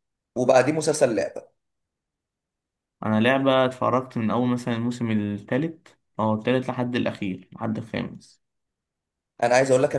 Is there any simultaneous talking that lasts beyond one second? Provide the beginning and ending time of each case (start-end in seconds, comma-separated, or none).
none